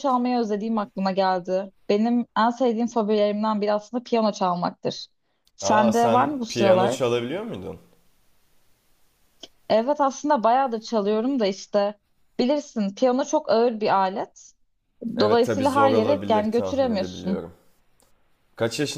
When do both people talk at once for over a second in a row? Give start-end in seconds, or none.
5.6-7.1, 15.2-17.4